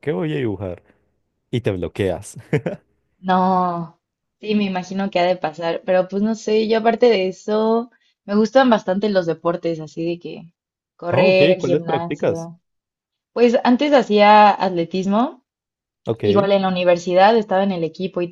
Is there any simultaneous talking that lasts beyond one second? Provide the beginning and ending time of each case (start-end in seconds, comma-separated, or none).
11.1-12.5